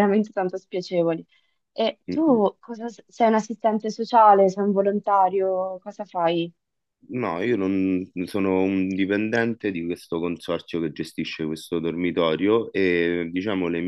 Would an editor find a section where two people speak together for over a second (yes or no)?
no